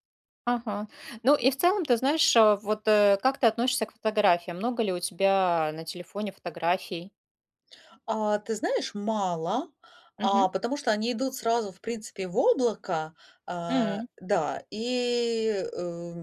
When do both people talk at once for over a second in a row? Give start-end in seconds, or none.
none